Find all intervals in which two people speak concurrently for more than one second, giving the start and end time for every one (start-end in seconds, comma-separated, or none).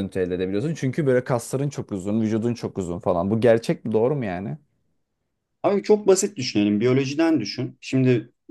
none